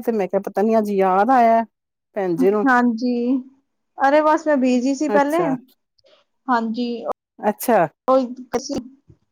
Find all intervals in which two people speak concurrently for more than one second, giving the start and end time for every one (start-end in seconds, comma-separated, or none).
none